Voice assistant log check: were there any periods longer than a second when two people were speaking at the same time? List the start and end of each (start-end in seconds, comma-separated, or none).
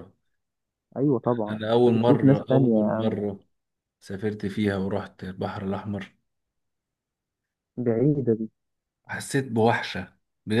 1.5-3.0